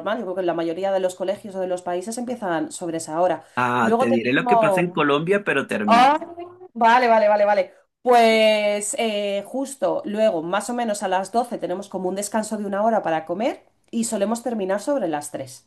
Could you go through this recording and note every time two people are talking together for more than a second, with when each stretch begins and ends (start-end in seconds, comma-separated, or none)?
3.8-5.0